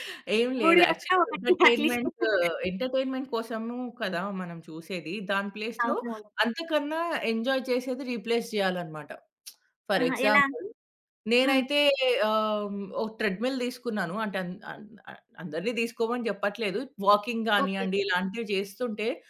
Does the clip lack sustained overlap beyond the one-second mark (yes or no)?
no